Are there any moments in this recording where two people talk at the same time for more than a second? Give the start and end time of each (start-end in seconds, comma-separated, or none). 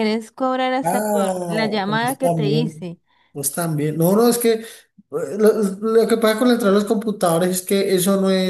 0.8-3.0